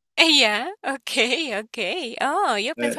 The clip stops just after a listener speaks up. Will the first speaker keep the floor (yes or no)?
no